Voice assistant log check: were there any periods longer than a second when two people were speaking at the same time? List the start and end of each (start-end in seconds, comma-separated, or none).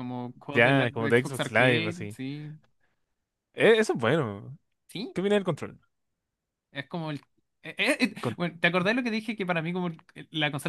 0.5-2.2